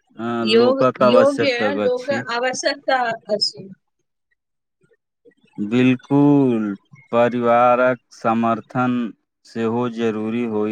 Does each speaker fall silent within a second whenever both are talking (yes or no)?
no